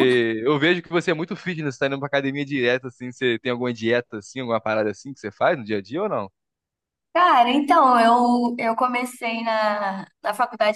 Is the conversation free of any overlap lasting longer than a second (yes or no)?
yes